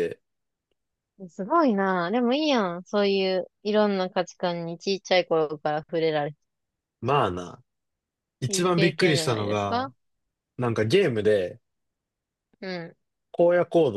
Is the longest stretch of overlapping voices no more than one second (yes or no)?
no